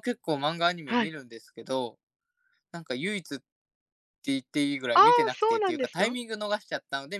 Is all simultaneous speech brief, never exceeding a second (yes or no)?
no